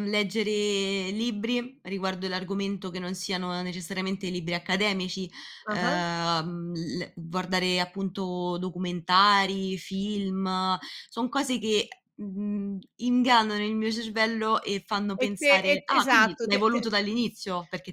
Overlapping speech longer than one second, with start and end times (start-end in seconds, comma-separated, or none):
15.2-16.9